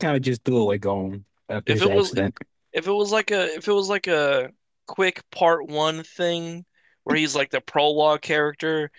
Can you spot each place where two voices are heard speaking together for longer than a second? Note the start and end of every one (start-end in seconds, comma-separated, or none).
none